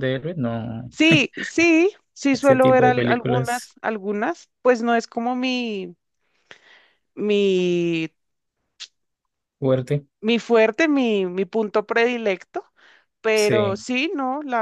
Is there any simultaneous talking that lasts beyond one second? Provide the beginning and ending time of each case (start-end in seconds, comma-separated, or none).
2.3-3.7